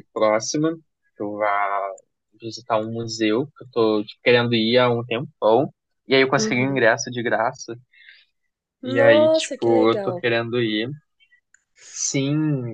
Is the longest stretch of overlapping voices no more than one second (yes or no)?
no